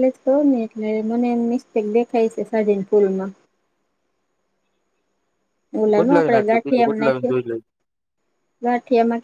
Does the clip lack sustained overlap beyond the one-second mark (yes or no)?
no